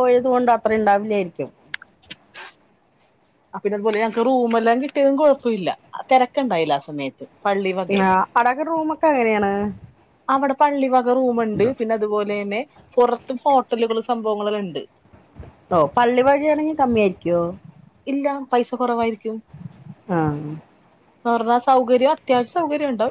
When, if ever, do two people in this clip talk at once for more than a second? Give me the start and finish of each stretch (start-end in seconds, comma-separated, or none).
none